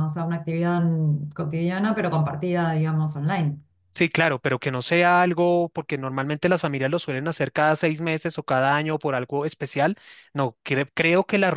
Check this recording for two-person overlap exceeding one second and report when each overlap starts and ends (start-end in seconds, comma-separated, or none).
none